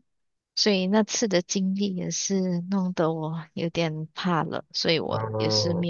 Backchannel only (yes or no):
yes